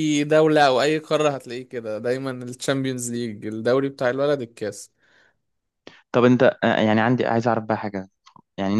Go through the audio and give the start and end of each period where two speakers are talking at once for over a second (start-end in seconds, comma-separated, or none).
none